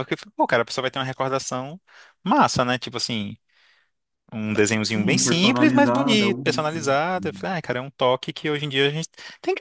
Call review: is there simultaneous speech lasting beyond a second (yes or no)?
yes